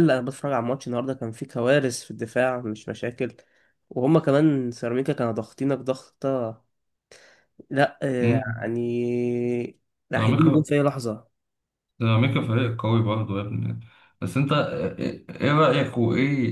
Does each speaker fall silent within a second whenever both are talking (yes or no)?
yes